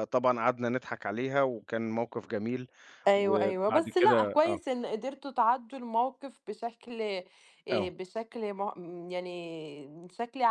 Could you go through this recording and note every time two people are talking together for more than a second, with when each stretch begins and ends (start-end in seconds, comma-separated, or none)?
3.2-4.6